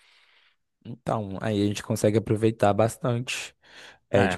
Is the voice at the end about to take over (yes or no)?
yes